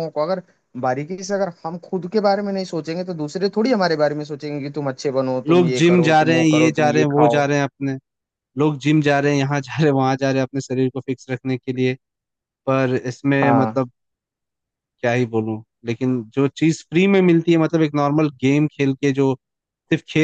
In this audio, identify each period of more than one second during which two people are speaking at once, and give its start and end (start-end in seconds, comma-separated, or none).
5.5-7.4